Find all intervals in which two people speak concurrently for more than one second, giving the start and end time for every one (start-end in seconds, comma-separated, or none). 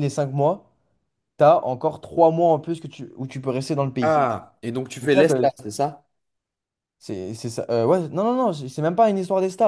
none